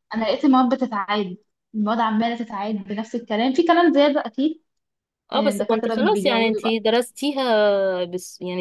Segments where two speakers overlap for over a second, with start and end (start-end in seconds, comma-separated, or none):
5.3-6.8